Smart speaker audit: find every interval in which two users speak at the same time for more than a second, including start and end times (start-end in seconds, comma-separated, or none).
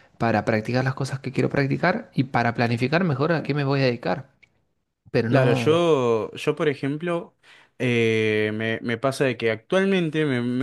none